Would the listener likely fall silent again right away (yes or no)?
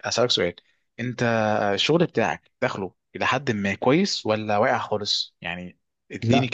no